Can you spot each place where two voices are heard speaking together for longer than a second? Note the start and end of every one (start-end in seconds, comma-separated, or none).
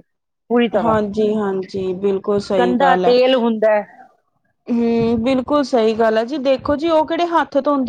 none